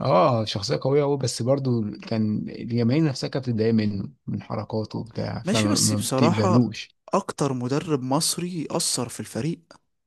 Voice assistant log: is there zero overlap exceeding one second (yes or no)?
no